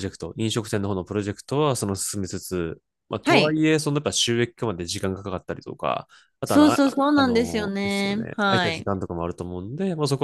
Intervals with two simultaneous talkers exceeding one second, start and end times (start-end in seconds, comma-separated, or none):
6.5-8.9